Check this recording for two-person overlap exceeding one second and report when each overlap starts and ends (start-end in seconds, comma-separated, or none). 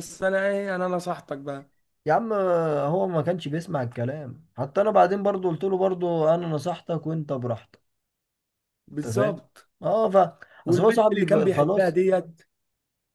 10.7-11.9